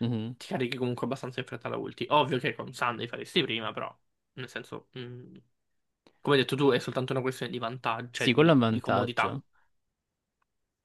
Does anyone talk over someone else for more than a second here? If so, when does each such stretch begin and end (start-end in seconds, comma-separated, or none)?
8.2-9.4